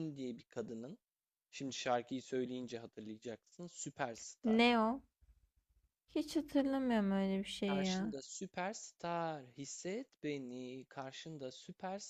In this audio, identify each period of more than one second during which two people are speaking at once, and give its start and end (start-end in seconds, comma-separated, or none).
none